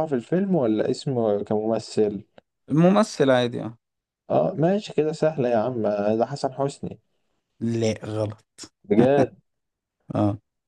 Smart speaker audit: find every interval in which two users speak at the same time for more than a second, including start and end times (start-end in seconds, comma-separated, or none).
none